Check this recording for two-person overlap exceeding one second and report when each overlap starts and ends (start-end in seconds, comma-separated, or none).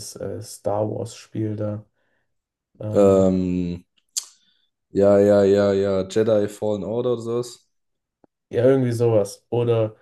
none